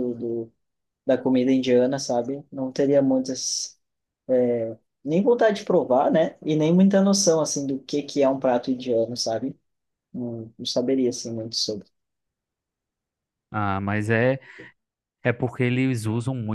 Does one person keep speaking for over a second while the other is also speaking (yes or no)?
no